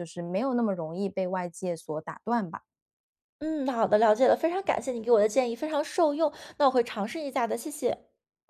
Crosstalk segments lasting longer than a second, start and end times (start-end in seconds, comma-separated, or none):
none